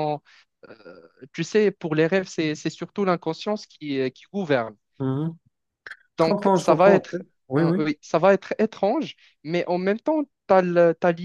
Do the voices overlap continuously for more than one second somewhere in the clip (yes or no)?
yes